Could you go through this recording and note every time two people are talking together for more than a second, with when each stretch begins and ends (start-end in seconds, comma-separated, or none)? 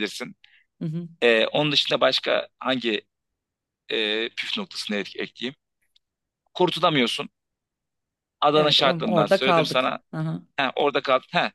8.5-10.0